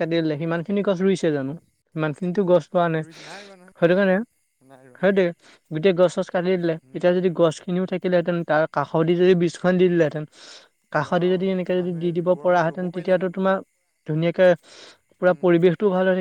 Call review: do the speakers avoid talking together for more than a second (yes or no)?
no